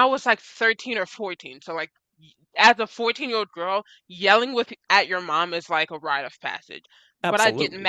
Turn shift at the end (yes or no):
no